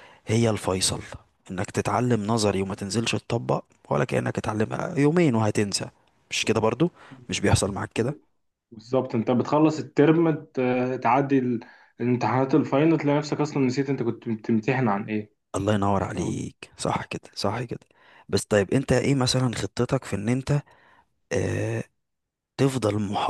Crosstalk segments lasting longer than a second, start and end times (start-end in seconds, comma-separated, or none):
none